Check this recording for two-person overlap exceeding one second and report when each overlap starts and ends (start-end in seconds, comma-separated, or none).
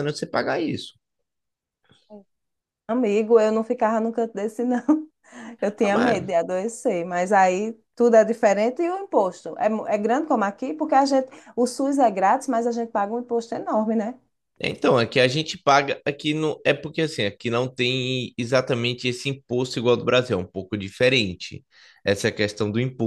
none